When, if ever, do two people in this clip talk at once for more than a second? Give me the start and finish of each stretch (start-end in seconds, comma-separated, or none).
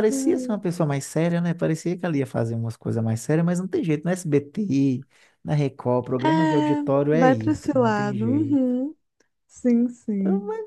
6.2-8.6